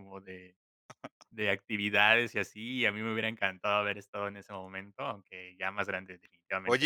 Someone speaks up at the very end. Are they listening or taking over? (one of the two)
taking over